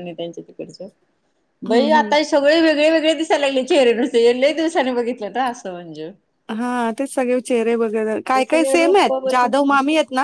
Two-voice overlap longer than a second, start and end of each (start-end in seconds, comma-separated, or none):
none